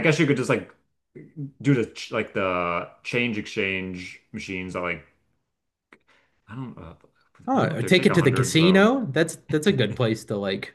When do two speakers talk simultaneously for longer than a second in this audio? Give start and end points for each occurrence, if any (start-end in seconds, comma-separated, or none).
7.5-8.9